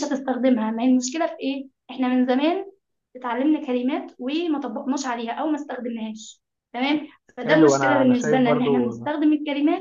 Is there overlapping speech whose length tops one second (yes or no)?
yes